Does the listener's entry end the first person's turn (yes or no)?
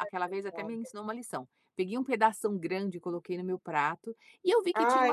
no